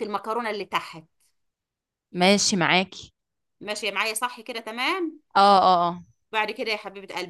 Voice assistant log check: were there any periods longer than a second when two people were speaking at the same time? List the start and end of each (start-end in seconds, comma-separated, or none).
none